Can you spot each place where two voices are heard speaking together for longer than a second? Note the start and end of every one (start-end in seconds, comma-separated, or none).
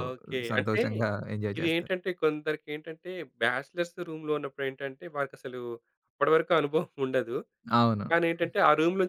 none